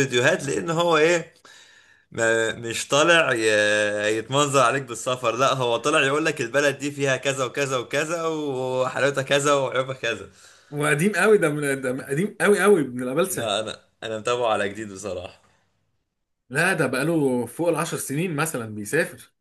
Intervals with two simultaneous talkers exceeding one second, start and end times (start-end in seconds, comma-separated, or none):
none